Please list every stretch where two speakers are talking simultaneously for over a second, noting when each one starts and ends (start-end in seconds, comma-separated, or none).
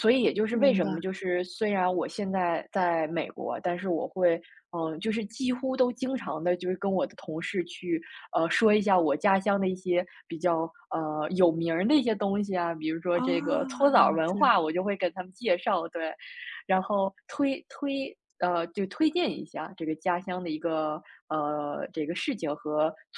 13.1-14.4